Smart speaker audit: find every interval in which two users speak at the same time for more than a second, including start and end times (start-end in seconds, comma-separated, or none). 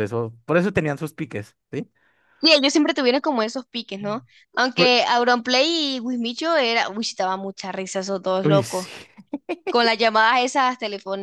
none